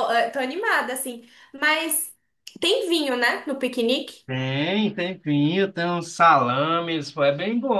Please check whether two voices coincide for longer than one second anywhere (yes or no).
no